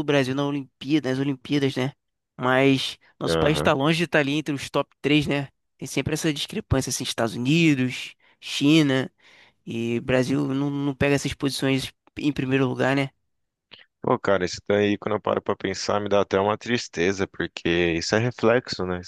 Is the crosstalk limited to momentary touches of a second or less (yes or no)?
yes